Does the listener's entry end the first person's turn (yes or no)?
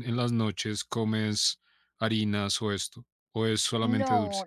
yes